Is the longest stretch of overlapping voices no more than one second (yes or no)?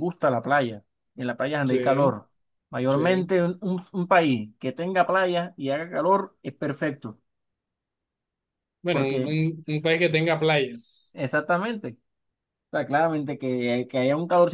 yes